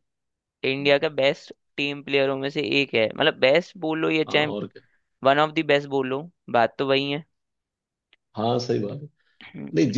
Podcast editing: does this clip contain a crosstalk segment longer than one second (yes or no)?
no